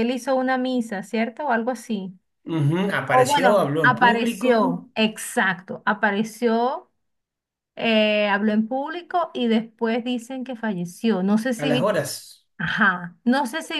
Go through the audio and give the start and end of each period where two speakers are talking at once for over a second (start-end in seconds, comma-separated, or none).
3.1-4.9